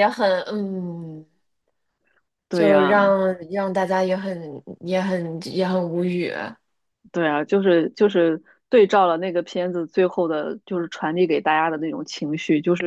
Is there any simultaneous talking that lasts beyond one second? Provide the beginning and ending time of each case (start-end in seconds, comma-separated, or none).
none